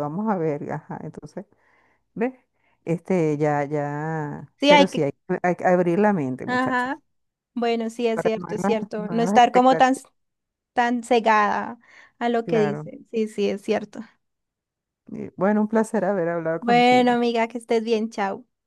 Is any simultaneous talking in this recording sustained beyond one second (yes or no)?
yes